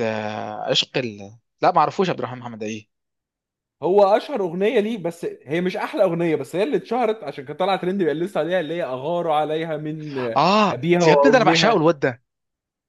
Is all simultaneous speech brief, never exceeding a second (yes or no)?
no